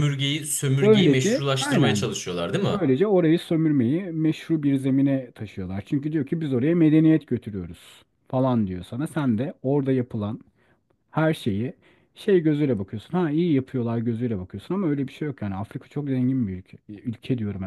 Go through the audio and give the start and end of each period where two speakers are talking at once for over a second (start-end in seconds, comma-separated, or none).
0.8-2.1